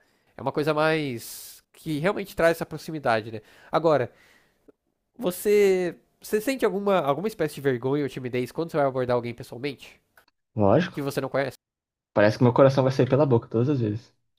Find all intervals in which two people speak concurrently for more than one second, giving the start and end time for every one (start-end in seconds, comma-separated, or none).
none